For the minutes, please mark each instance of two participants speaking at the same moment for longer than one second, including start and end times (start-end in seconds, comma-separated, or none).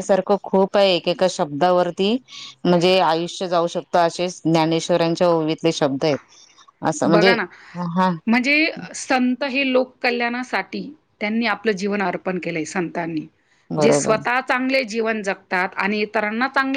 none